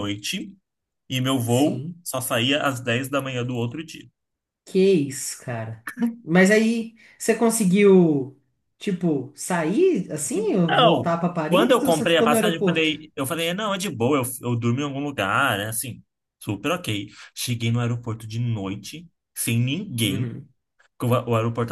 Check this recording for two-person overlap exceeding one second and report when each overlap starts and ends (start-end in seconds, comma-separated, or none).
10.3-12.9